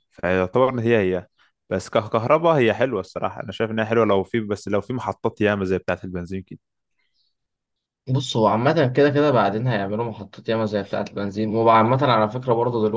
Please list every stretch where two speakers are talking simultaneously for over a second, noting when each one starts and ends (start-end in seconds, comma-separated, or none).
none